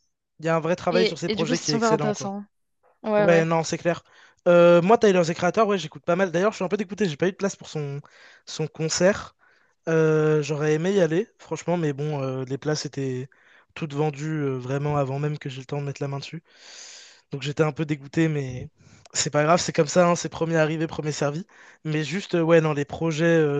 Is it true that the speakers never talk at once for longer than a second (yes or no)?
no